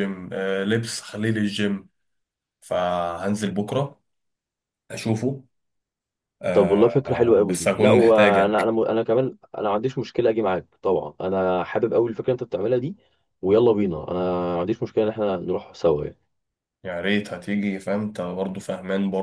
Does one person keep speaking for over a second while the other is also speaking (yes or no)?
yes